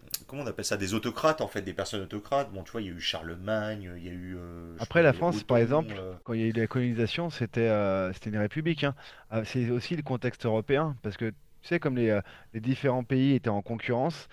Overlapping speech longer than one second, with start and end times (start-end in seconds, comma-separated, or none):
4.8-6.1